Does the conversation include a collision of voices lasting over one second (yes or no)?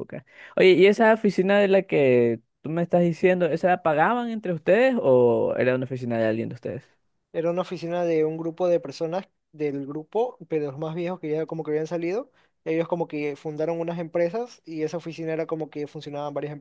no